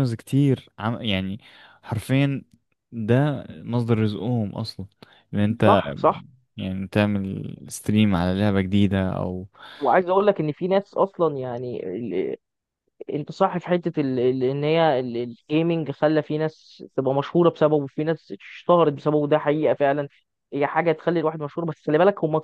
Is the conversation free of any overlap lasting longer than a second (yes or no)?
yes